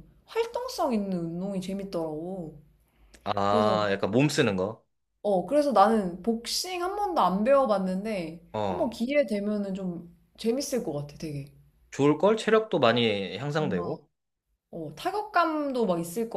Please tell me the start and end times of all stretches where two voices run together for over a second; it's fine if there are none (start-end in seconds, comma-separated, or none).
none